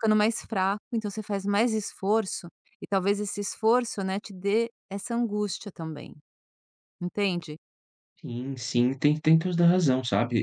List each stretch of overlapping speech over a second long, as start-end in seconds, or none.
none